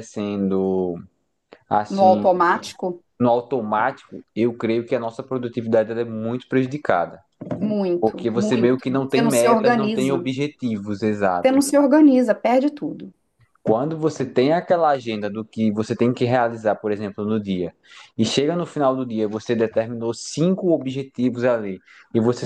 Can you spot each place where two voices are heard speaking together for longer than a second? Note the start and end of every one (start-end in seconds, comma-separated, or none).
8.0-10.3